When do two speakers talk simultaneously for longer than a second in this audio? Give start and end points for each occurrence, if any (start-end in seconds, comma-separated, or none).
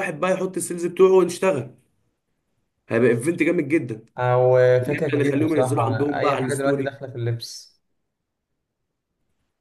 4.9-6.9